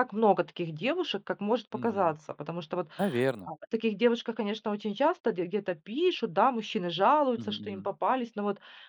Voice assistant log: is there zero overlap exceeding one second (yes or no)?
yes